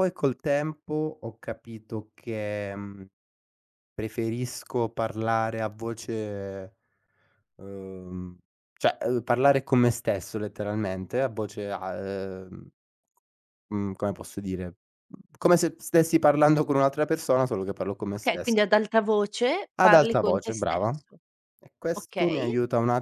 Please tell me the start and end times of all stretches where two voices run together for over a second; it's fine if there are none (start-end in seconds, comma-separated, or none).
19.8-21.0